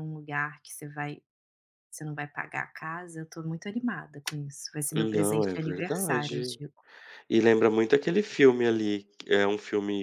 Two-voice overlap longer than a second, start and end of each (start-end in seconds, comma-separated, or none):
5.0-6.6